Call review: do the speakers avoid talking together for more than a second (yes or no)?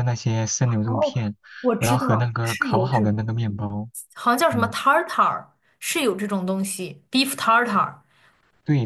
no